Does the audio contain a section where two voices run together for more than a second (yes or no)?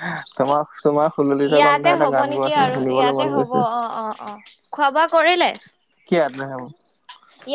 yes